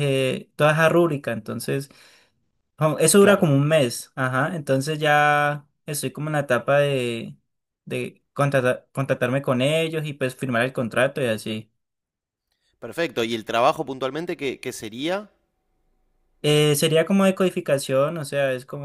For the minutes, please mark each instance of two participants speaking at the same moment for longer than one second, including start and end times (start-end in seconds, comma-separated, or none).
none